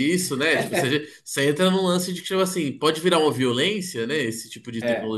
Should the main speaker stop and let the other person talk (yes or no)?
no